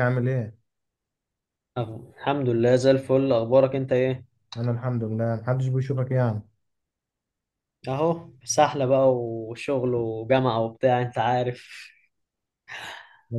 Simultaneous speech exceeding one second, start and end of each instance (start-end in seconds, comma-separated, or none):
none